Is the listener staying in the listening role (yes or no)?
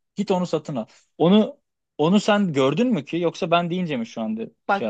no